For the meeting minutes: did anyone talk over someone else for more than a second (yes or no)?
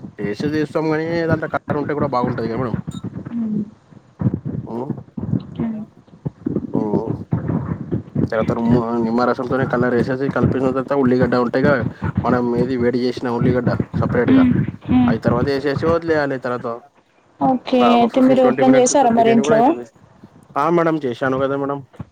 yes